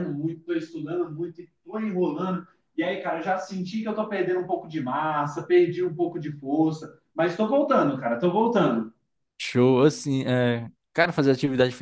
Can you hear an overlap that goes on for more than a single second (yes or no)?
no